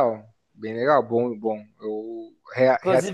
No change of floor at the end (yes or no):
no